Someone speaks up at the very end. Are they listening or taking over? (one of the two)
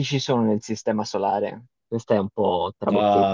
taking over